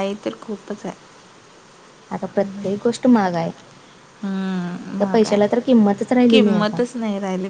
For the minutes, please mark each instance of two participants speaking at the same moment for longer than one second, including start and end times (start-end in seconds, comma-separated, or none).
none